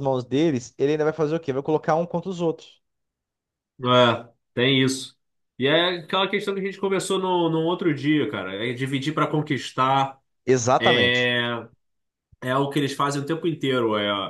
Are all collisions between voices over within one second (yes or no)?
yes